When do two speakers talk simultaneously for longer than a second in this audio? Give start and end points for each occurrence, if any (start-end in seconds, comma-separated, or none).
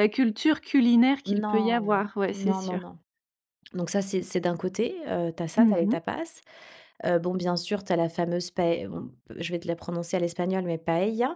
1.3-2.8